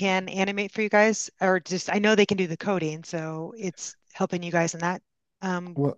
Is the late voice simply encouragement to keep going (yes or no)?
no